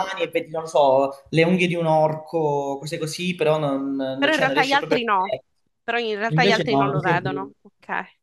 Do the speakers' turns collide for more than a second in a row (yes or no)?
yes